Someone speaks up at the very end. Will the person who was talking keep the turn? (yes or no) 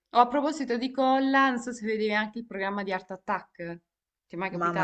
no